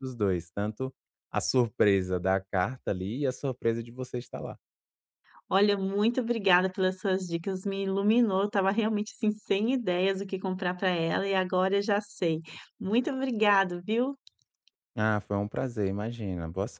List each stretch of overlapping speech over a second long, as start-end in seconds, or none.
none